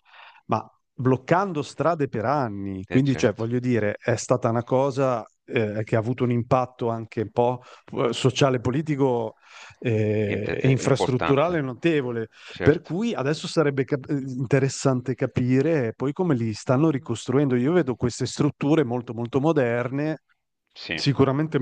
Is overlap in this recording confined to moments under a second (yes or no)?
no